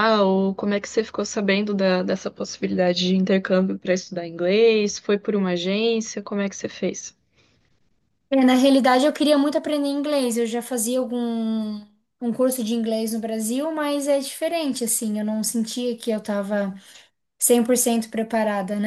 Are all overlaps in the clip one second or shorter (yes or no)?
yes